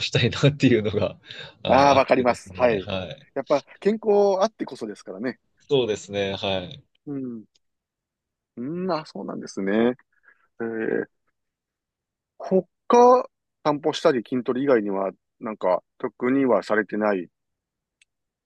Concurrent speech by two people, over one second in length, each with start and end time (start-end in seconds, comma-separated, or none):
1.7-2.9